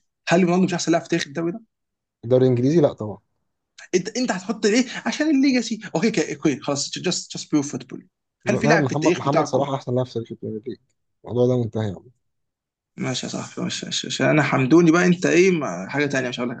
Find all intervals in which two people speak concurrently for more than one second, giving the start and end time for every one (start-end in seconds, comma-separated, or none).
8.5-9.7